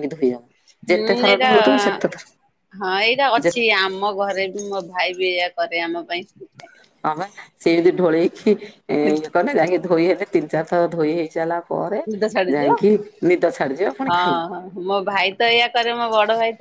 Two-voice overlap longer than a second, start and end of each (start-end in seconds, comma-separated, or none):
none